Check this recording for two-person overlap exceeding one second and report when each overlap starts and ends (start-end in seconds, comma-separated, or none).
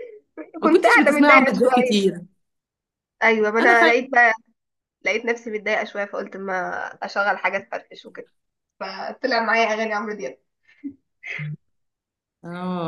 0.6-2.0